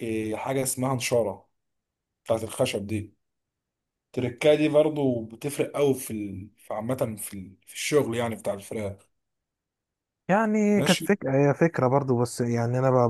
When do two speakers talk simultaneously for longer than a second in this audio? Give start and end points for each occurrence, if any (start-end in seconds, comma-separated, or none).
none